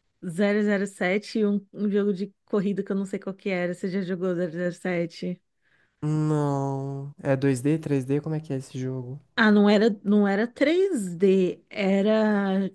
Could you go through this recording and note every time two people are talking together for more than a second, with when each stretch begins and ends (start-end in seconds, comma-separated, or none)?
none